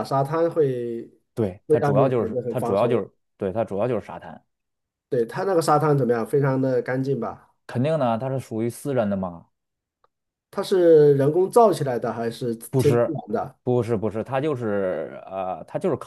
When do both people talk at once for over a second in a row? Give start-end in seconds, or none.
1.7-3.0